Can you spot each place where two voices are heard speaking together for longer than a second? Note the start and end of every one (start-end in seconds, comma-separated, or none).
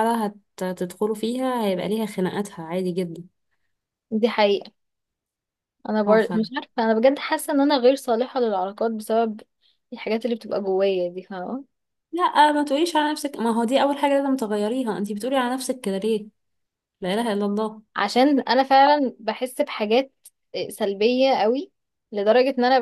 none